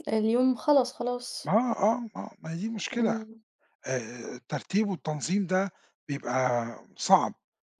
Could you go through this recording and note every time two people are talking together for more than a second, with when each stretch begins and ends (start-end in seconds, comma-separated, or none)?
none